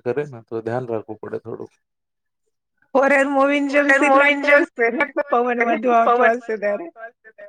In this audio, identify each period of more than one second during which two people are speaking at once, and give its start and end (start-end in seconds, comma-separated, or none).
3.7-6.9